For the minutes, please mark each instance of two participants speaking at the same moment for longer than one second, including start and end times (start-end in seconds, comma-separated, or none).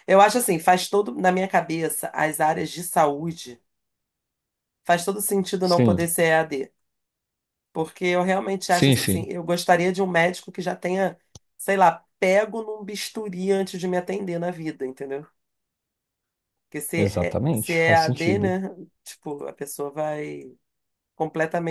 16.9-18.6